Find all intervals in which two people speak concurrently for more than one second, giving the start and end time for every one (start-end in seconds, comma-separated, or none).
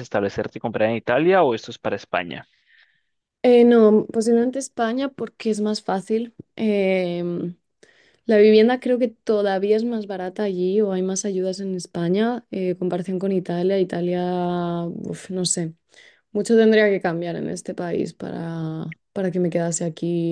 none